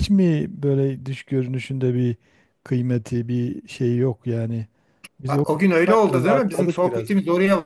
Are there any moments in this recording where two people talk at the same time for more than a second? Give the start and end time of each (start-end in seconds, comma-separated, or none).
5.2-7.1